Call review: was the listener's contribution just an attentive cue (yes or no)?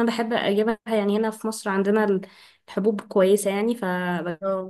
yes